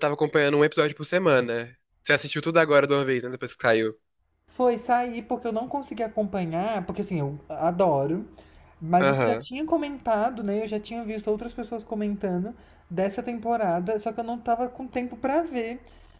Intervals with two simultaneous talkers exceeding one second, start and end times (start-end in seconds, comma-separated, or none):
none